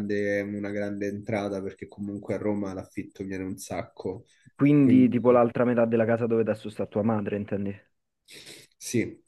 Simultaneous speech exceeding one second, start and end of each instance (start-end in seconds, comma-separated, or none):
none